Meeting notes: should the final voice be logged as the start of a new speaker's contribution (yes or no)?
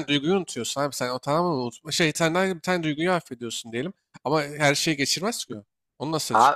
yes